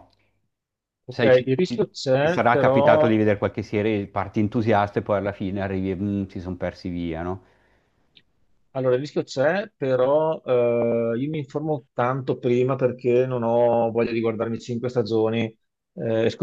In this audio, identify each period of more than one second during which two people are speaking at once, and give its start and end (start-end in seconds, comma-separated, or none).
1.1-3.1